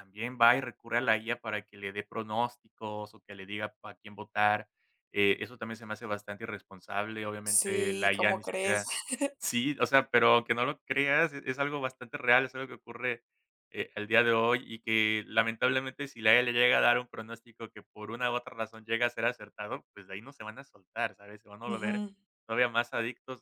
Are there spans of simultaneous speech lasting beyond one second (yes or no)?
yes